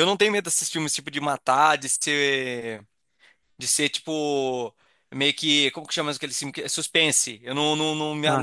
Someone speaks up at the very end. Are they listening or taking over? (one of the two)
listening